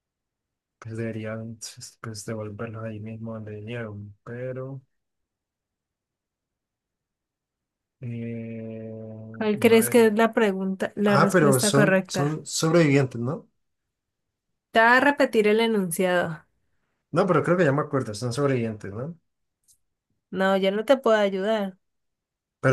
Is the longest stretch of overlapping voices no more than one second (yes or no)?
no